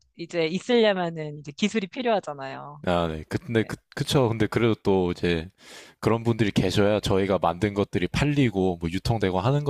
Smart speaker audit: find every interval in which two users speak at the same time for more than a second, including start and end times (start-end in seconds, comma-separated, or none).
none